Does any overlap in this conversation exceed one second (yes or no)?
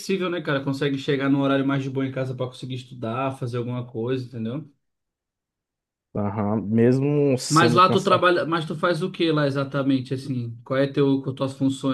no